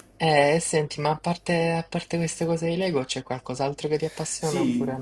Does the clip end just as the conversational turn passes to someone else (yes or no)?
yes